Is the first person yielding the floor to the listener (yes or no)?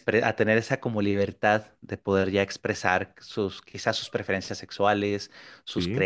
no